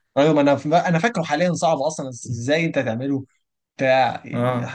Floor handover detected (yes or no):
no